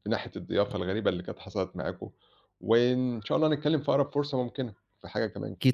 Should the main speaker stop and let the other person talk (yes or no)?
yes